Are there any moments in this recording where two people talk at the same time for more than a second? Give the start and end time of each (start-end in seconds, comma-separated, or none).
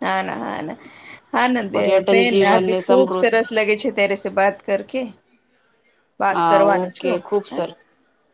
1.7-3.4